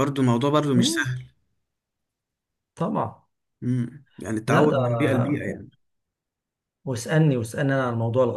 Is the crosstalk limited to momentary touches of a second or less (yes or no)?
yes